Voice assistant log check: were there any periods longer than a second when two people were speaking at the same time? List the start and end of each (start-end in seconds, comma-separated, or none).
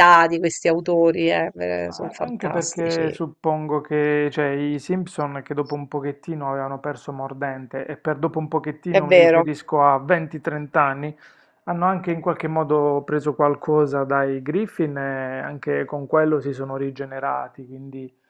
1.9-3.1